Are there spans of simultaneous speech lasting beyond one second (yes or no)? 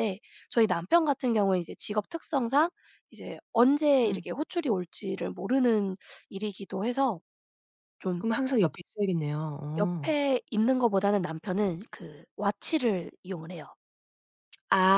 no